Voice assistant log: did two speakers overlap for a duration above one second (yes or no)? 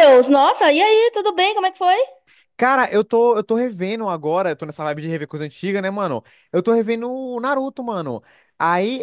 no